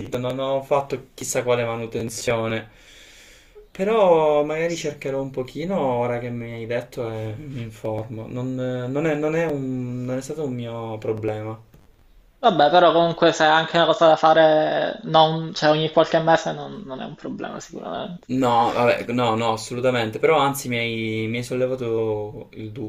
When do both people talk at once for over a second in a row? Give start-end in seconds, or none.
none